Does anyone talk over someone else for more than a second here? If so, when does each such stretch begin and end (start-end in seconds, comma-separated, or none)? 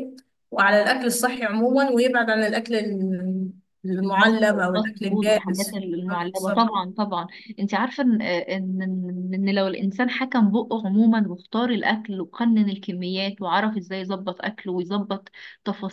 4.0-6.7